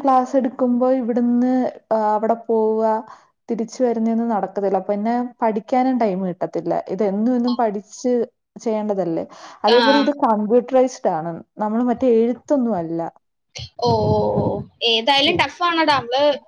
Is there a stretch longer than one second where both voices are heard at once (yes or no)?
no